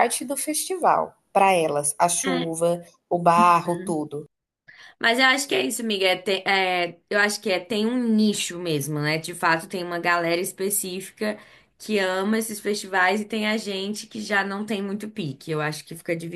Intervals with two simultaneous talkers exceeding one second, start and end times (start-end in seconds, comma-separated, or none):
none